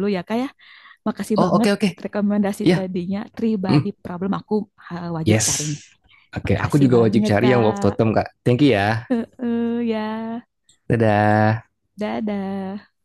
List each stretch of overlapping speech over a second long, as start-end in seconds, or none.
6.5-8.0